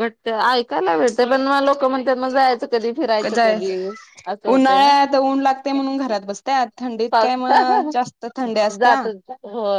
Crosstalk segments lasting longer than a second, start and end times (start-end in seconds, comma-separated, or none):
7.1-9.0